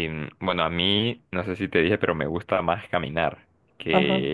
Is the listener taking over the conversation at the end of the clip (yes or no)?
no